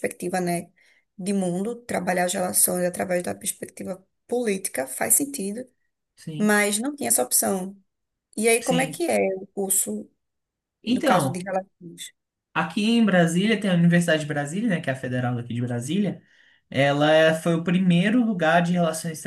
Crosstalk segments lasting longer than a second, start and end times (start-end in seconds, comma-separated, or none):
none